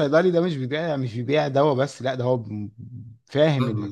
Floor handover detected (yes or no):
yes